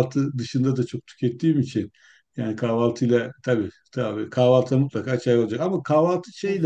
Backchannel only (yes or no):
yes